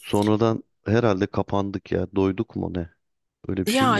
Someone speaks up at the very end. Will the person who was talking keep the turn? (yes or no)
no